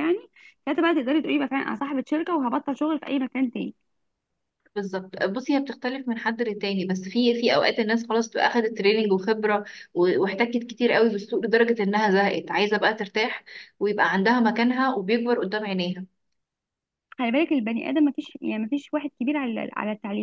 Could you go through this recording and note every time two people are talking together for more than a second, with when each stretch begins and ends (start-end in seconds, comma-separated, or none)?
none